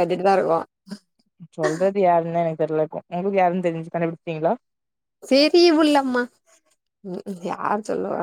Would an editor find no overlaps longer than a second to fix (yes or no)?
yes